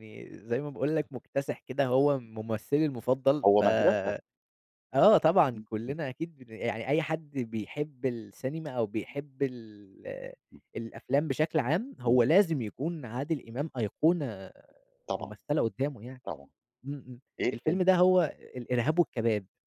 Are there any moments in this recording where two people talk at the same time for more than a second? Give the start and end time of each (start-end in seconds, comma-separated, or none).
none